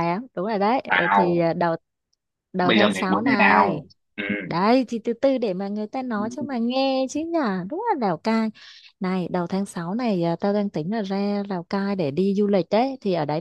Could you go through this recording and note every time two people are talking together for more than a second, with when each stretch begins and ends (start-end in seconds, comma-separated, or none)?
2.6-3.8